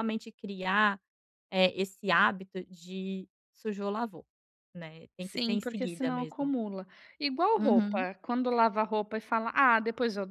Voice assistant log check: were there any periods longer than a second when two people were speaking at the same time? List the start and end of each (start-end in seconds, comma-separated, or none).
5.2-6.5